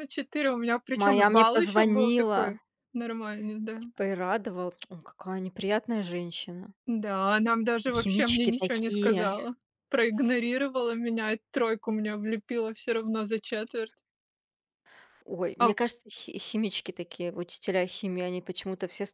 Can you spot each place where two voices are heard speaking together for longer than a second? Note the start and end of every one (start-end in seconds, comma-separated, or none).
0.9-2.6, 8.0-9.4